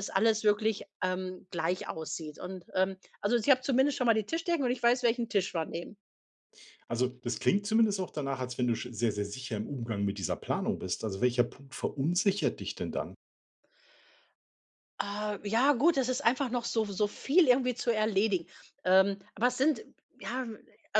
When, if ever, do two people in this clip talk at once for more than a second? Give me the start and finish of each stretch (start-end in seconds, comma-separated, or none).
none